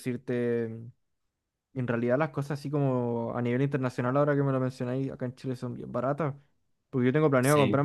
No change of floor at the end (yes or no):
yes